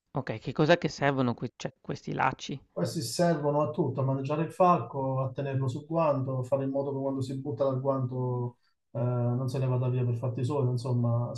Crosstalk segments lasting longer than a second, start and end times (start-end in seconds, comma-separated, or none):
none